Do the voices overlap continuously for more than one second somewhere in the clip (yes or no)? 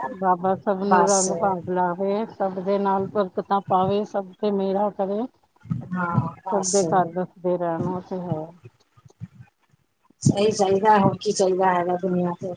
no